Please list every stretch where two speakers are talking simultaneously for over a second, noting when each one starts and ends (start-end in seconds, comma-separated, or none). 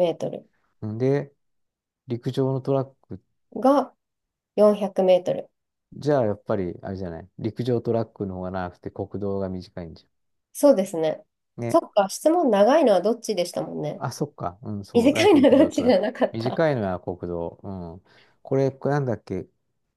14.9-16.6